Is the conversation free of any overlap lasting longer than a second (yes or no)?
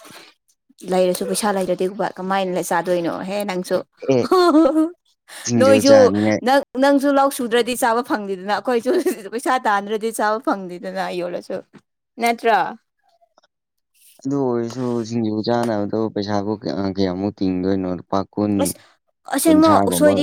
yes